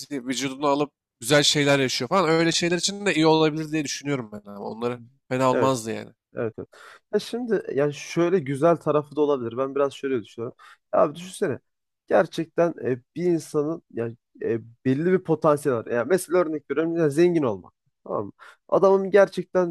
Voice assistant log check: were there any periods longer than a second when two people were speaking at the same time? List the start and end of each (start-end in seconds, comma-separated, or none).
none